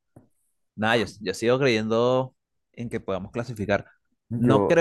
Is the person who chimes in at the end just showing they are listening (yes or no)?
yes